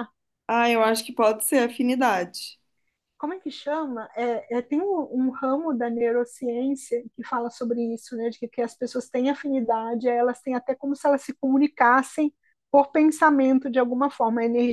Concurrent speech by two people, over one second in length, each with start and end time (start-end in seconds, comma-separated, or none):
none